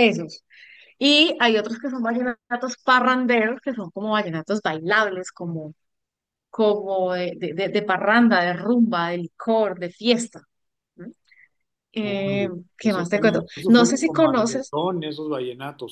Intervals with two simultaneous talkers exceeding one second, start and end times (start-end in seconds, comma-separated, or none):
12.0-14.8